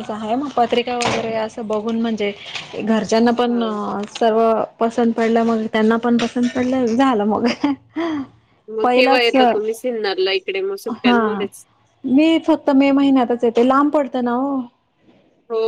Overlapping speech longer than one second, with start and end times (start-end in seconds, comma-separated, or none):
none